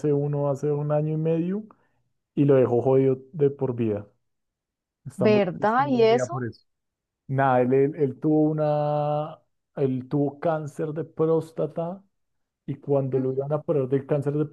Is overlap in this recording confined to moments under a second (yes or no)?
no